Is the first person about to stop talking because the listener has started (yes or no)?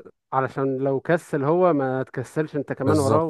yes